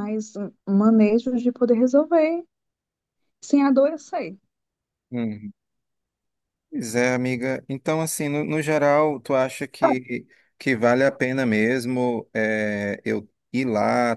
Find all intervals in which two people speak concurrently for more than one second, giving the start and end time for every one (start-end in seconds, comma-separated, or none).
none